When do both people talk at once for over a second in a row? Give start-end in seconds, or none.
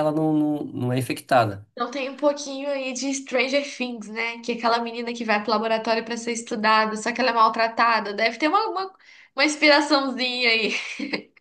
none